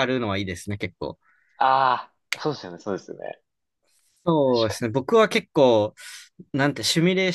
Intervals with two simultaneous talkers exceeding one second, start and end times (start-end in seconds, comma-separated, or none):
none